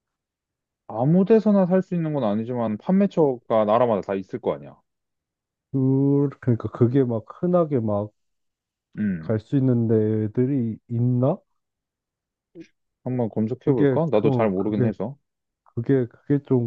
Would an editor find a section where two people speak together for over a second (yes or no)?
yes